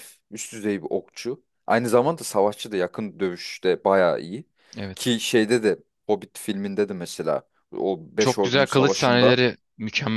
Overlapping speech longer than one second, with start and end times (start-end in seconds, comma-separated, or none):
8.2-9.4